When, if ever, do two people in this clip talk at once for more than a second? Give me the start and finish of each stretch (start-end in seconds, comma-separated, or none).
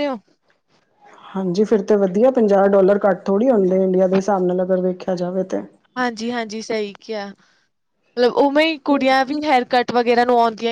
none